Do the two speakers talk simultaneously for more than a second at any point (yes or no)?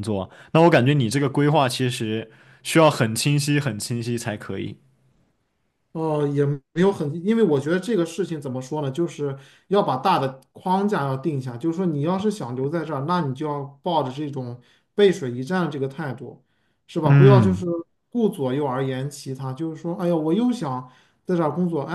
no